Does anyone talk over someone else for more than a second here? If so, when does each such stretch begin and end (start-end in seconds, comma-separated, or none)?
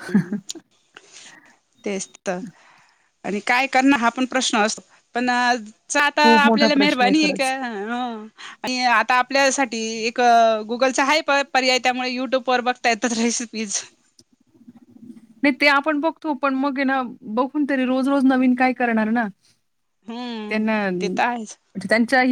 6.0-7.5